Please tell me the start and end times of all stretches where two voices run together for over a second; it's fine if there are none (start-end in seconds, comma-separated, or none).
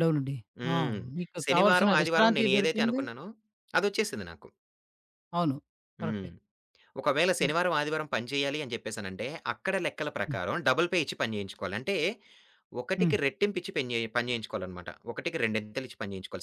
1.4-3.0